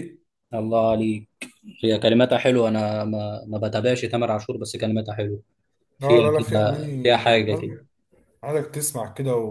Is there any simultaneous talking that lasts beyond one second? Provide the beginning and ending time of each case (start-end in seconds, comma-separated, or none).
6.0-7.7